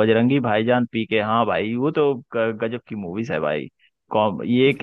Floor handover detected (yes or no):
no